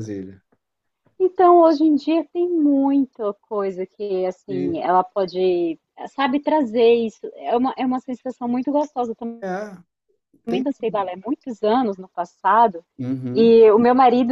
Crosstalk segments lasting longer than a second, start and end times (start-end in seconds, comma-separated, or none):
none